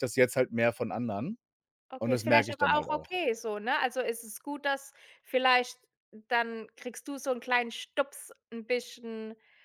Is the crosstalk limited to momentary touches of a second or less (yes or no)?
no